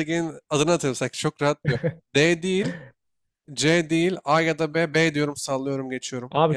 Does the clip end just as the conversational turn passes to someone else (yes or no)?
yes